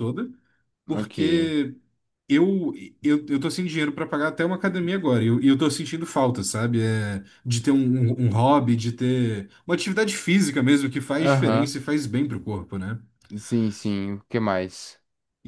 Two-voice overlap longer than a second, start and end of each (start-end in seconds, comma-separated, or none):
none